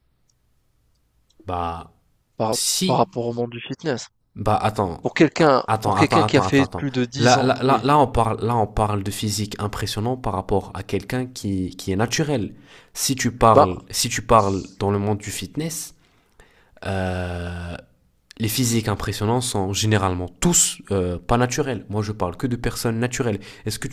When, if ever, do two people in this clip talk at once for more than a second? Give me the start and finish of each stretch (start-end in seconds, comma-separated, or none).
5.7-7.8